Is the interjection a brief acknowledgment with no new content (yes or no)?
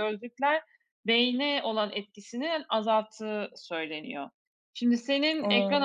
yes